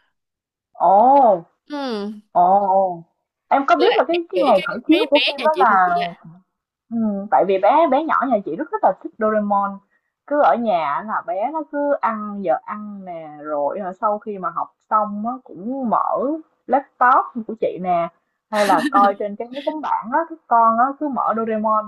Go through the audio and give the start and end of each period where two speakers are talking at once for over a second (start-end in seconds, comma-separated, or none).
3.8-5.9